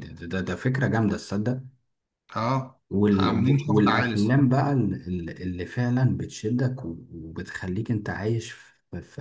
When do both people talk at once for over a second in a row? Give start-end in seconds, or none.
2.9-4.5